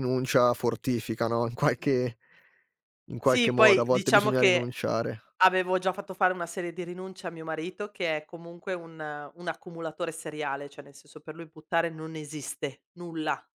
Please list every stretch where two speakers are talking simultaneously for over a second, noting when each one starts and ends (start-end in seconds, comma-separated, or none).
3.2-4.7